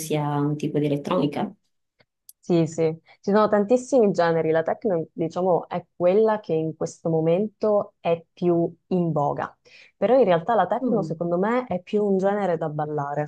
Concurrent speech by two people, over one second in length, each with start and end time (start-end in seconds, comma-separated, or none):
none